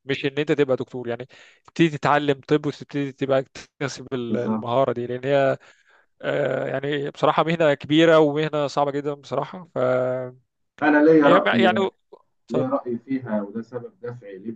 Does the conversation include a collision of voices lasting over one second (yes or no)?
no